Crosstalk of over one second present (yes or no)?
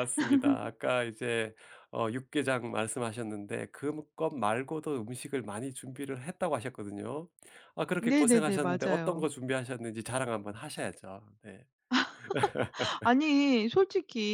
yes